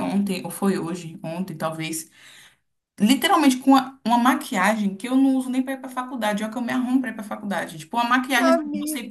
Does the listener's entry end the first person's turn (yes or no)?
no